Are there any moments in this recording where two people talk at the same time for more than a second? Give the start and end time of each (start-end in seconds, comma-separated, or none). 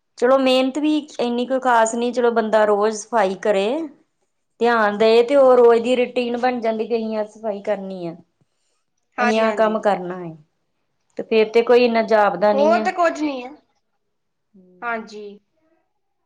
none